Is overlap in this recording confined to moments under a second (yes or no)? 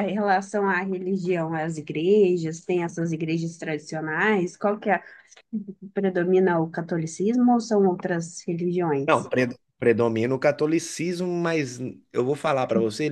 yes